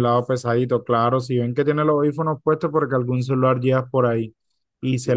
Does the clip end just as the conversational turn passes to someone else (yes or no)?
no